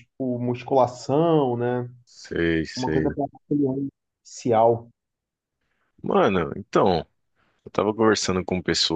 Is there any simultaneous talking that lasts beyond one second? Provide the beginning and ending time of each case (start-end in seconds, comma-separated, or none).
none